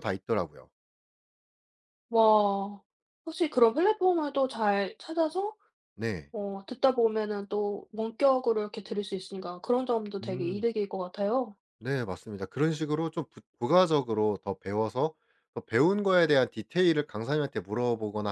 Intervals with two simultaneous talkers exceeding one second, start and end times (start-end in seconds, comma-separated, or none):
none